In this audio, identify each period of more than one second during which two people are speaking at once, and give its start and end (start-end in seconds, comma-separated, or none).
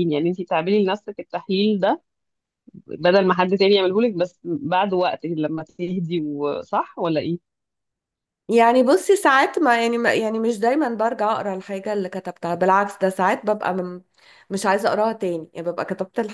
none